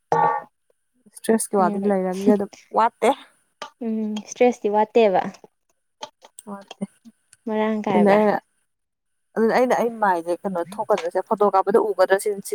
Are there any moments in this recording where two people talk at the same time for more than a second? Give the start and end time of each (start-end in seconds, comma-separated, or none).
none